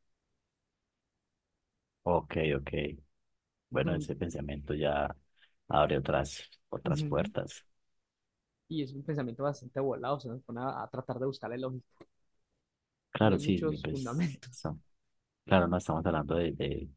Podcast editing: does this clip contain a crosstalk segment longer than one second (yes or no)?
yes